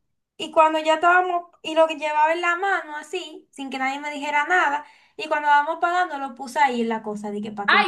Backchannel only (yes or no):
no